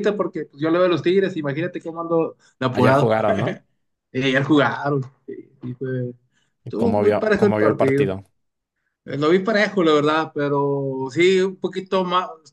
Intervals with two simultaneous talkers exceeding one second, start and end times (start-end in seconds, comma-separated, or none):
6.7-8.1